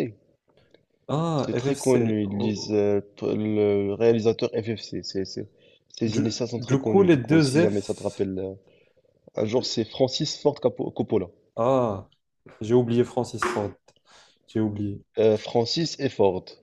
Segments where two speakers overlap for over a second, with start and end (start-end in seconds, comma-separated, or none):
1.4-2.8, 6.1-8.2